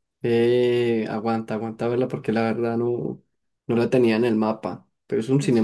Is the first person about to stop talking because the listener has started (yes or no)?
yes